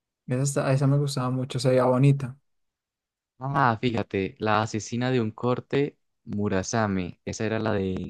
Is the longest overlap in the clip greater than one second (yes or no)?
no